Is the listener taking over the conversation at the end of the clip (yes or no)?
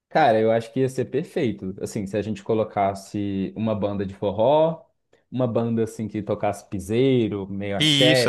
yes